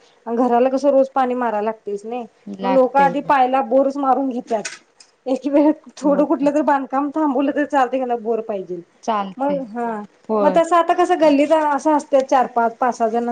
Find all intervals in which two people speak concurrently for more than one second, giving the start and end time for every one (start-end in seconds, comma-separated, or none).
none